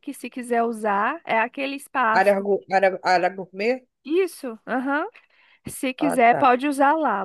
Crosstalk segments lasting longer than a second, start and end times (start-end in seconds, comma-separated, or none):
none